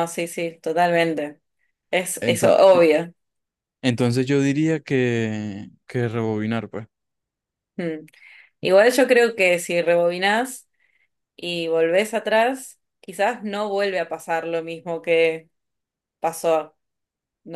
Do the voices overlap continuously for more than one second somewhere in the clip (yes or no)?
no